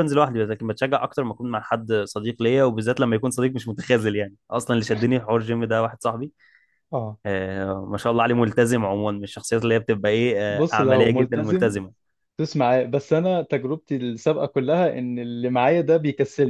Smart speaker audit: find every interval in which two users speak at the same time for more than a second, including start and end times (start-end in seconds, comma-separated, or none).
10.5-11.8